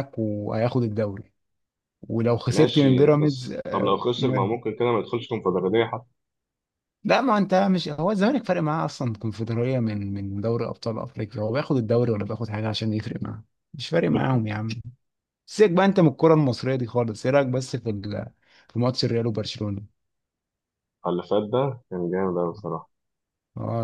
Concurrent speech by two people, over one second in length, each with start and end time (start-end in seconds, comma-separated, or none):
2.5-4.5